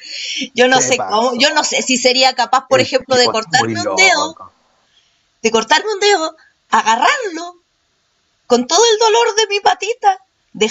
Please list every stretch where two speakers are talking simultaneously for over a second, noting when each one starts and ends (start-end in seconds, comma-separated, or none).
0.7-1.9, 2.7-4.4